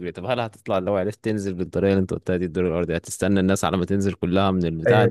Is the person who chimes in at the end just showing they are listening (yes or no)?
no